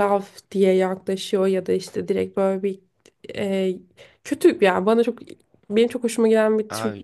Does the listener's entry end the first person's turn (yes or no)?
no